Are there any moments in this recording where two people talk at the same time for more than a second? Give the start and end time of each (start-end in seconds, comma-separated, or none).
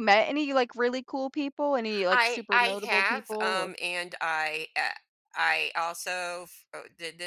2.1-3.7